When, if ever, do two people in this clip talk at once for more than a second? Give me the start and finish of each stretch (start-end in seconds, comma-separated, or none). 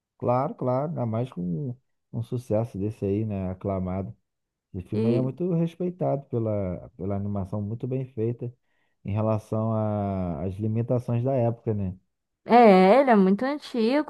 none